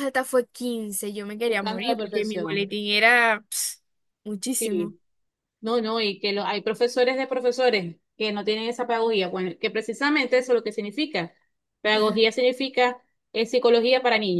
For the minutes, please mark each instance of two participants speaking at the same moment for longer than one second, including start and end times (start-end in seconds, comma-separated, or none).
1.5-2.7